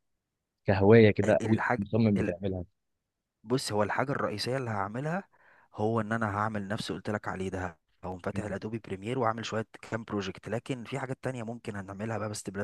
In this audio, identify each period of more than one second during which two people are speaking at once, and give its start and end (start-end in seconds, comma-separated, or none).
none